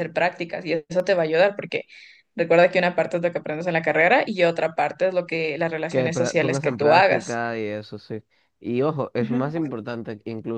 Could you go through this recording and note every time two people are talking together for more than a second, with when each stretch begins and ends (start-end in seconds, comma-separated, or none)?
5.9-7.4